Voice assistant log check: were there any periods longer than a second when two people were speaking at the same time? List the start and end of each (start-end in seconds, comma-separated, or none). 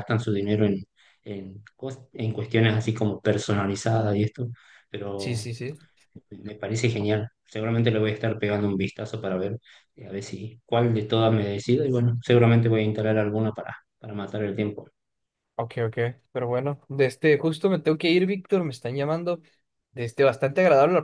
none